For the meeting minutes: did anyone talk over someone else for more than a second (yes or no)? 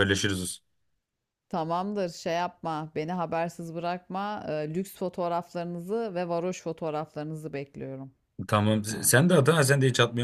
no